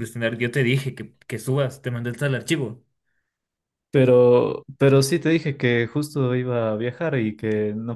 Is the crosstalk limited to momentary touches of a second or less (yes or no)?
yes